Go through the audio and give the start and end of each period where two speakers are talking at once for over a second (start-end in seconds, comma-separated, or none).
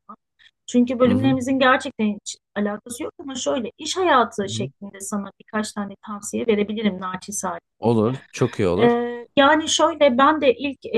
none